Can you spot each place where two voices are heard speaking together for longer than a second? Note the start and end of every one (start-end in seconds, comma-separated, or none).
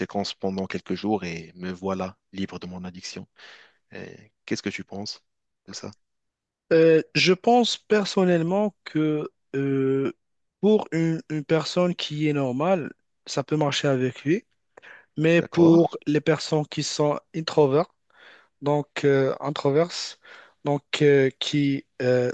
none